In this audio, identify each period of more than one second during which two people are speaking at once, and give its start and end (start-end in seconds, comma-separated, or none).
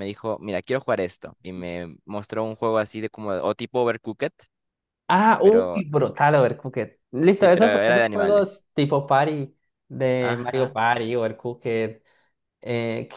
7.4-8.6